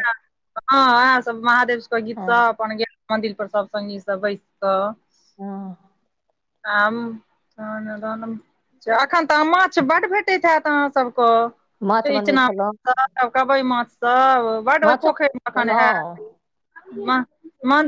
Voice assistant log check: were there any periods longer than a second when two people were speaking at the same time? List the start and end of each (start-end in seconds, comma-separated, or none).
14.8-16.3